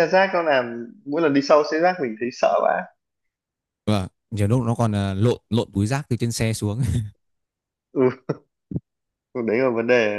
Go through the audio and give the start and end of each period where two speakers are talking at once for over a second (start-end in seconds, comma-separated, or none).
none